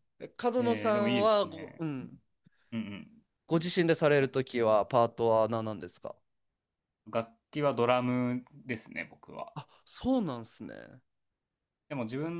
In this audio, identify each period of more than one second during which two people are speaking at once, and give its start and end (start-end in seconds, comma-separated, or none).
0.6-1.8